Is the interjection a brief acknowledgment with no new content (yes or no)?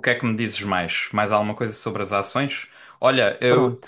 yes